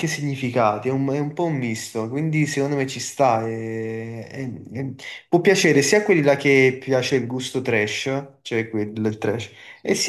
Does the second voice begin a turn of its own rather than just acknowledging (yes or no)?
no